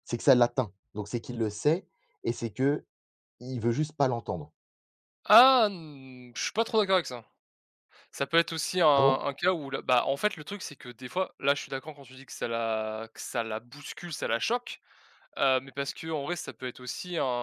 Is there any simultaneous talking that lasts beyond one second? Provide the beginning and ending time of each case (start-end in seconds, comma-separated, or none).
none